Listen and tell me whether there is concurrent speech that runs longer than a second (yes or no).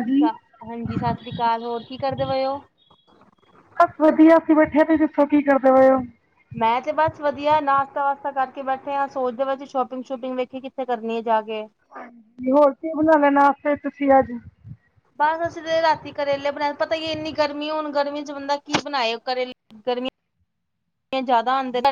no